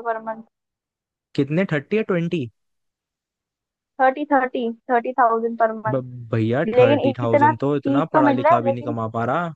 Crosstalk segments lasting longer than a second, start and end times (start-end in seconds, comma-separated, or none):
6.7-9.0